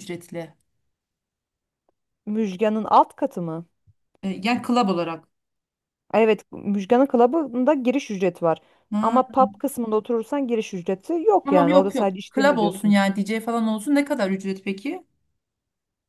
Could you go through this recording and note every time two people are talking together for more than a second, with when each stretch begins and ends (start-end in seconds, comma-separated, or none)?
11.4-13.0